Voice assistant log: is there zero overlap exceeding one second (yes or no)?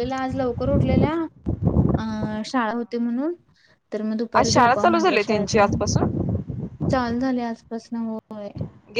no